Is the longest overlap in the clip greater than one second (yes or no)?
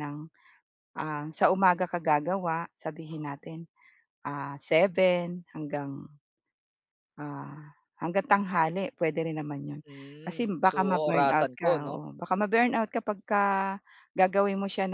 yes